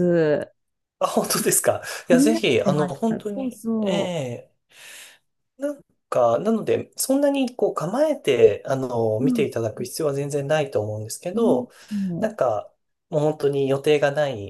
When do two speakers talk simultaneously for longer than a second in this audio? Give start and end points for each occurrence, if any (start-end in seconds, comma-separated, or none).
2.1-4.2